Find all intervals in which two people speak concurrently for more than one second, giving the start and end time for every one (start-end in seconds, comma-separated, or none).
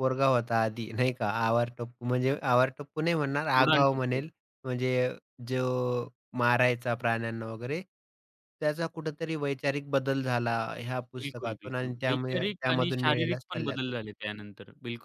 11.2-13.9